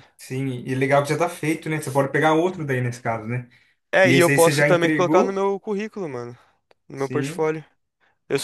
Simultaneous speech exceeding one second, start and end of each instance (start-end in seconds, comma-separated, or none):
4.0-5.4